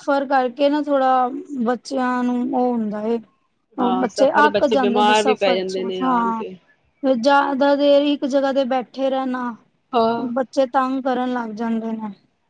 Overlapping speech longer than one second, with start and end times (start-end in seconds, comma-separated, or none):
3.8-6.4